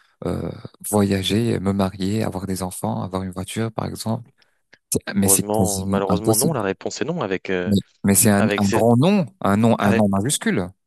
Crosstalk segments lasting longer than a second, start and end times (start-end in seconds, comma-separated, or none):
5.2-6.5